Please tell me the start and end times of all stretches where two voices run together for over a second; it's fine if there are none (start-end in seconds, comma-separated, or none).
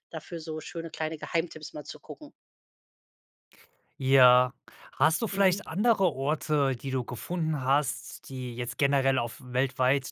none